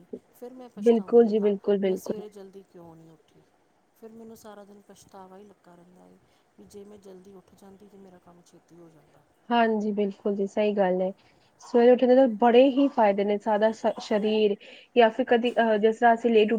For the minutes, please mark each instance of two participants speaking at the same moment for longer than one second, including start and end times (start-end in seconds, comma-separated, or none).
0.8-2.2